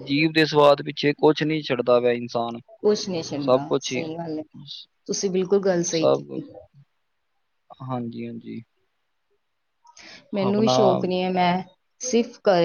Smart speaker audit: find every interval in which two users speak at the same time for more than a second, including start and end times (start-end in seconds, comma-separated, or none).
none